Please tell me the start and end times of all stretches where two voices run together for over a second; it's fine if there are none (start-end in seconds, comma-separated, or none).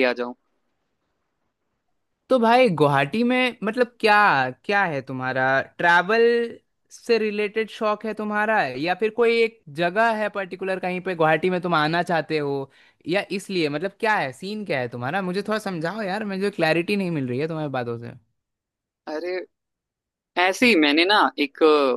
none